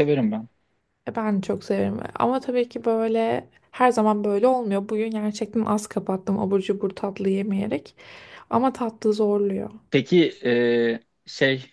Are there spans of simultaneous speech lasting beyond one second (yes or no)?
no